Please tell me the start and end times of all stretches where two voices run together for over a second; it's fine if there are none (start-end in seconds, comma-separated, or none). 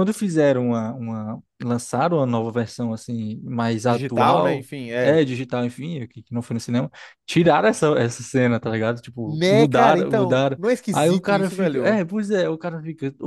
3.9-5.2, 9.2-12.0